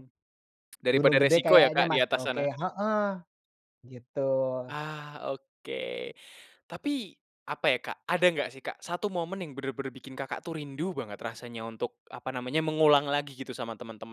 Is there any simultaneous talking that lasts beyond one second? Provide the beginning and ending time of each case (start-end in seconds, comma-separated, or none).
0.9-2.5